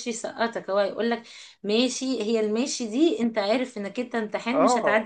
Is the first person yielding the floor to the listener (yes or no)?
yes